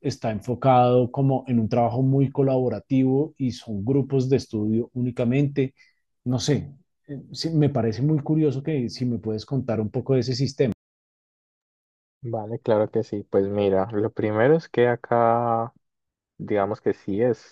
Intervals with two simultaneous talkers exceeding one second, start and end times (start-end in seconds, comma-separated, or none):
none